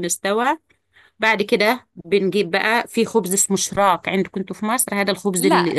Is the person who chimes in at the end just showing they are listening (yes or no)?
no